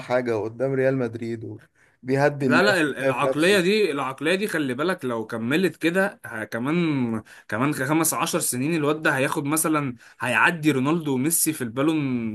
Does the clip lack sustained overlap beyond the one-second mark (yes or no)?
no